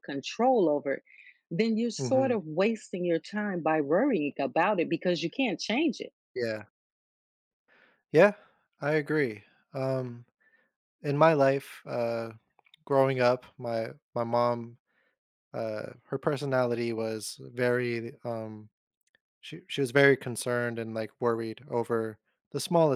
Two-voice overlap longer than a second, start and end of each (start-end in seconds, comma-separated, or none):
none